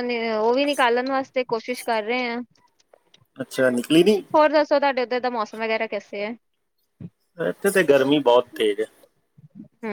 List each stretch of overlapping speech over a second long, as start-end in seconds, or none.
none